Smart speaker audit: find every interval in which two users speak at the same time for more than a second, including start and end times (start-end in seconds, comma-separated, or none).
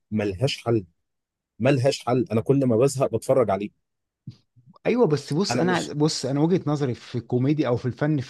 none